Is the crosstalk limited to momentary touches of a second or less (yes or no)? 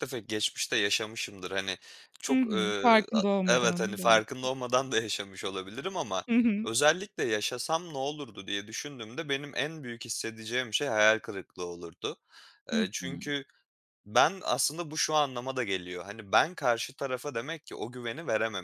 no